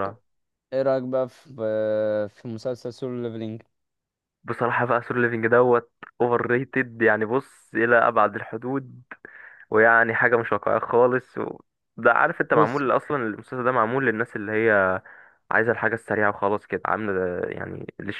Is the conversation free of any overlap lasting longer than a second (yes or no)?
yes